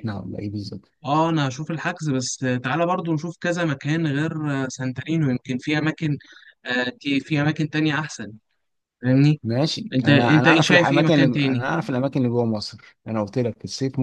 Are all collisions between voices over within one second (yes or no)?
no